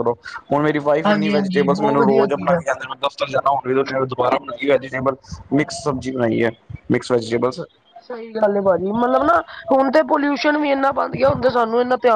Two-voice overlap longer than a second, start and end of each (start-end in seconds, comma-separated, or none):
1.1-2.6